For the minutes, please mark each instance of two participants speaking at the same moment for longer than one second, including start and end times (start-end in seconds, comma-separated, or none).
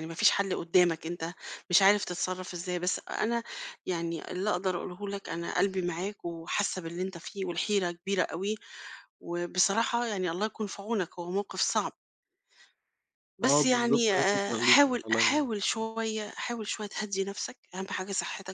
13.4-15.5